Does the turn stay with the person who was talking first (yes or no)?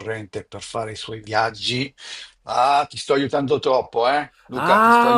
no